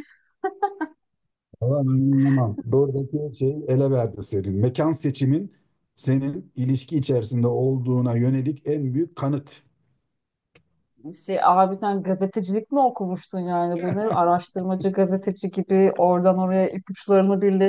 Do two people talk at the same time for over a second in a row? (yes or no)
no